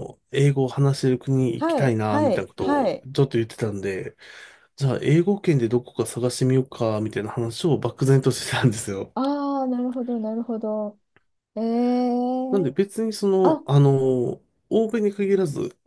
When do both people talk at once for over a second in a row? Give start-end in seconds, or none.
1.6-3.0